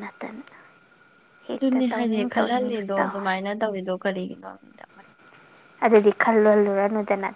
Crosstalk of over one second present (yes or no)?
yes